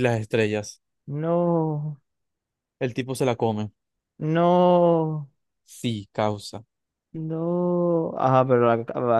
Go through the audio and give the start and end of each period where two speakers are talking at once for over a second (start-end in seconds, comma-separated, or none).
none